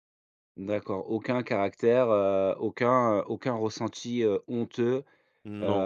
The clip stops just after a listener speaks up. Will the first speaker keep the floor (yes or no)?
yes